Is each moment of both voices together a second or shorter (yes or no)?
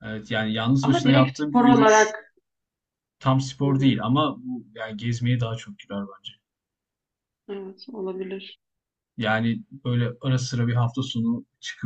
no